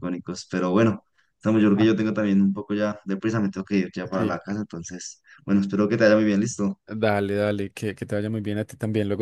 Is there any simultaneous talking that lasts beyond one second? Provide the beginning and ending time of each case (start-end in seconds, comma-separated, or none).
none